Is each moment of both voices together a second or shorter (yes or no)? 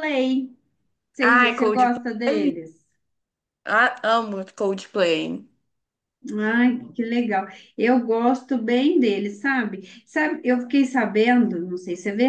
no